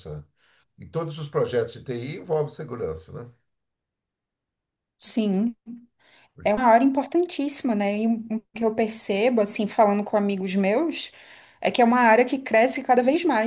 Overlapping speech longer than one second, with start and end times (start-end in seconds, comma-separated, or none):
none